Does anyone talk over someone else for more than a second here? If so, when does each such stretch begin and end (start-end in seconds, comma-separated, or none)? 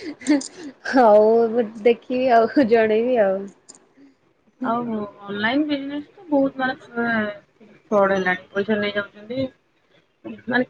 none